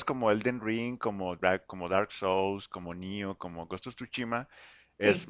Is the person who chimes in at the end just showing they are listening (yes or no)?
yes